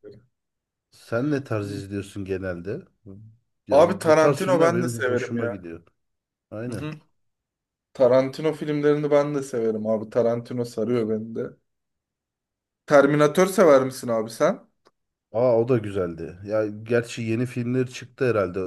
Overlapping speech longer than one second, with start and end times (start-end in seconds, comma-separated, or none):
3.7-5.6